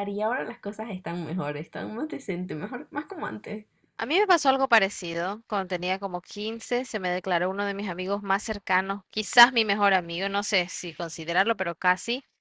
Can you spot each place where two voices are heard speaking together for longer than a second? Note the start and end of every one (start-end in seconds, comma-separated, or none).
none